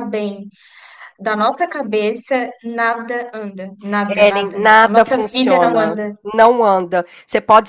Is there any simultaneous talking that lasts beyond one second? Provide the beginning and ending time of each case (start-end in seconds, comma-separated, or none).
4.1-6.2